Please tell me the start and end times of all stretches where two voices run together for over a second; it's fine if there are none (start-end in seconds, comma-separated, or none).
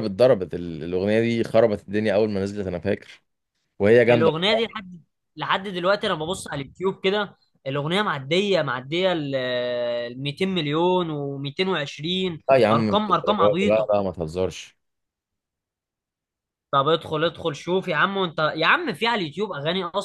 12.7-13.9